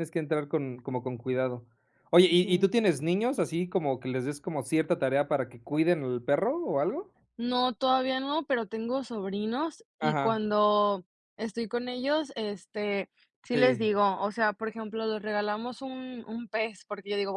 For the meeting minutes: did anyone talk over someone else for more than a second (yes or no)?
no